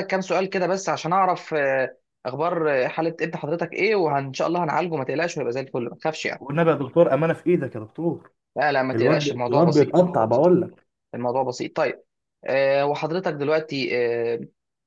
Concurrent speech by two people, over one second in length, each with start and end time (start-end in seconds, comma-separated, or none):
8.9-10.5